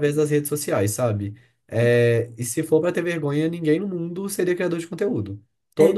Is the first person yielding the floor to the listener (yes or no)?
no